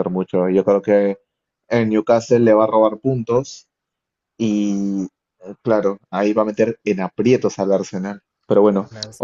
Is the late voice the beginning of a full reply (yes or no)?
no